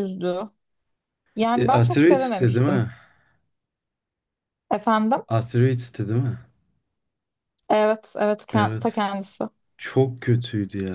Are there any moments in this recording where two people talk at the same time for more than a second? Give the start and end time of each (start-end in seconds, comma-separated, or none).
1.6-2.8